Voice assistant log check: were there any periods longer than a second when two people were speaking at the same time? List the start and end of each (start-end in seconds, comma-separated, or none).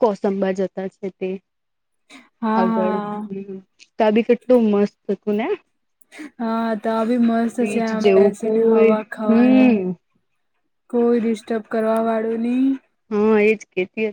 7.6-9.7